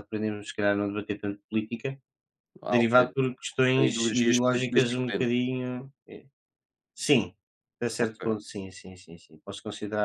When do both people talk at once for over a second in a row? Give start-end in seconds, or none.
3.7-5.3